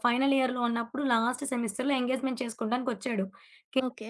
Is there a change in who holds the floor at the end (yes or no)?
no